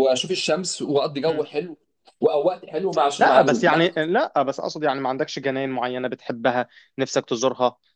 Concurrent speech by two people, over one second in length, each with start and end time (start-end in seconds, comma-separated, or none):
none